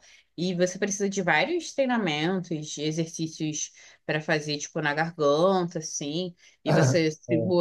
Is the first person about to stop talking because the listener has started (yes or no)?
no